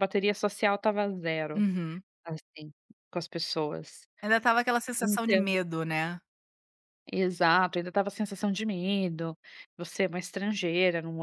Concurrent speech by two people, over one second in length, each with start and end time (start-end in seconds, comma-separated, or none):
none